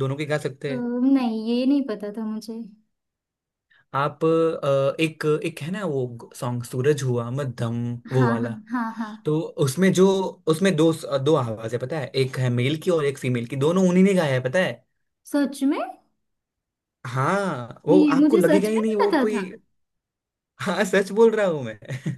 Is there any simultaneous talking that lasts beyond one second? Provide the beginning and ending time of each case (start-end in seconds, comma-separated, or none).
17.9-19.4